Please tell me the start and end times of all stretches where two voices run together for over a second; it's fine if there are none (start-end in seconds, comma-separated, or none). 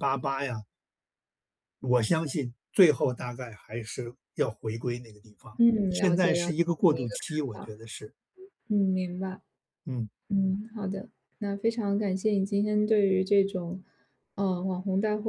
5.6-7.7